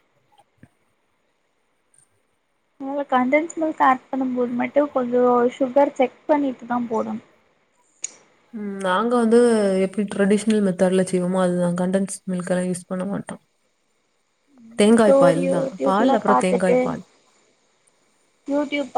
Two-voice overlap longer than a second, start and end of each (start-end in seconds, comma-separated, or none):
15.1-16.8